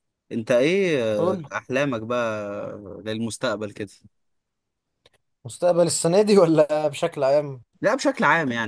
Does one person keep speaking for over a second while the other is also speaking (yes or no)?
no